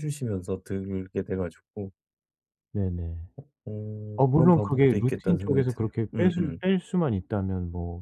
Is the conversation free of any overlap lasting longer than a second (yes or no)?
no